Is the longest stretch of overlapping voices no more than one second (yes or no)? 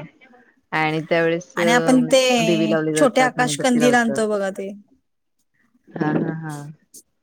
no